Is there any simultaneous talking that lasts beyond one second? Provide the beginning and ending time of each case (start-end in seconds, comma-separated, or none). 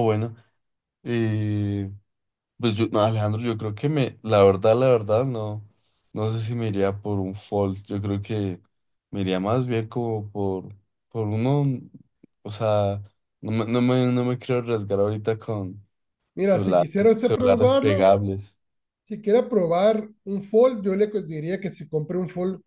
16.4-18.1